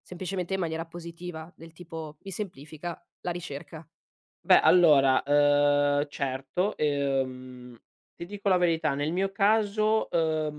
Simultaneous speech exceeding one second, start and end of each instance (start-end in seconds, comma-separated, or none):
none